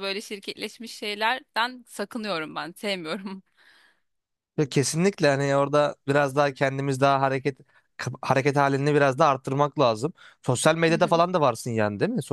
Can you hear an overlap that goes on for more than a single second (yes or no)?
no